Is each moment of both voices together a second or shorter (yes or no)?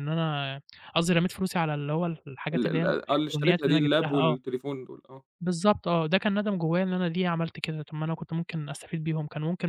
no